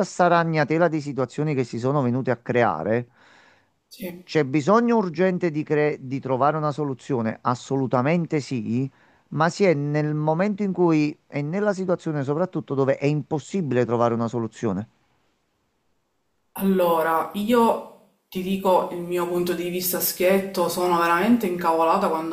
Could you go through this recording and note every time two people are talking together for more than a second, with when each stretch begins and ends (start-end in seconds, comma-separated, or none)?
none